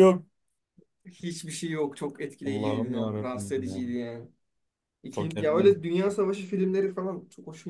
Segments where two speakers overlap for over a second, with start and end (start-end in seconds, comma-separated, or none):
2.5-3.8